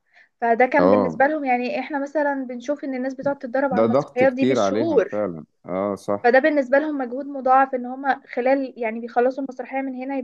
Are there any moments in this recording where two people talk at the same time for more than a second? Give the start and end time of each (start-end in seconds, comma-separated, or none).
3.7-5.1